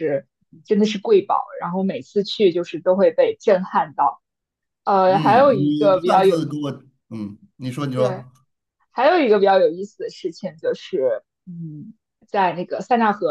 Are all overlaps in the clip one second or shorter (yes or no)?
no